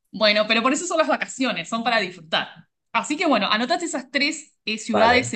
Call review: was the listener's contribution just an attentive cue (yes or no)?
yes